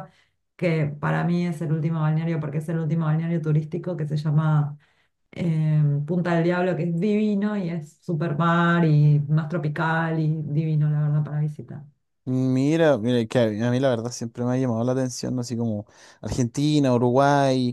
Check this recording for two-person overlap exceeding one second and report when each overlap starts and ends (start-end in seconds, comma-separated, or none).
none